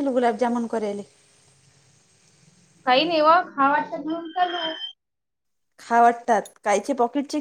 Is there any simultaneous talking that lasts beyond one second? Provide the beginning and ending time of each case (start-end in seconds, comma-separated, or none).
none